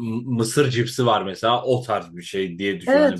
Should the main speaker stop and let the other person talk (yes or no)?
yes